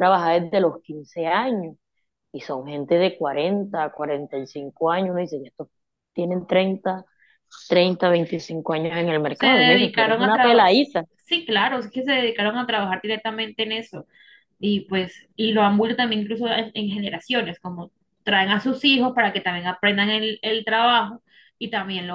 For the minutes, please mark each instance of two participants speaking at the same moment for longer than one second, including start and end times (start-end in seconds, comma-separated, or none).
9.3-10.7